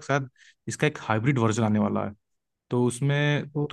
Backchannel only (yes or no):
yes